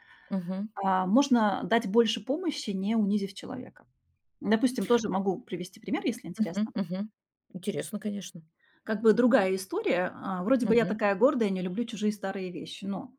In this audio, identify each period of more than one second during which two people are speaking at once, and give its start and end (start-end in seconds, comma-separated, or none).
none